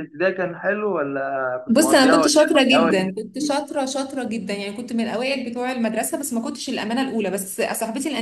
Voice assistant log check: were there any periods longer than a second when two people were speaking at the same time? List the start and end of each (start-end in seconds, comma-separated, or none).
1.7-3.1